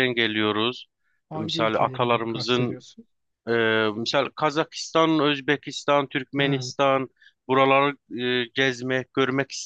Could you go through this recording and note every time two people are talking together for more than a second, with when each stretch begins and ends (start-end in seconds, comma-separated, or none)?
1.3-2.8